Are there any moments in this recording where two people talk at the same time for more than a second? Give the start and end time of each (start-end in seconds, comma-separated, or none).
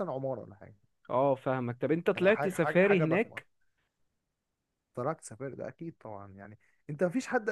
2.2-3.4